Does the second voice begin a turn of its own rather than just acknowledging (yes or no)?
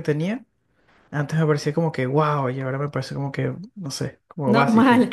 yes